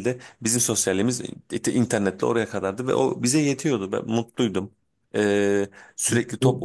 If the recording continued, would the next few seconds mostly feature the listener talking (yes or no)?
no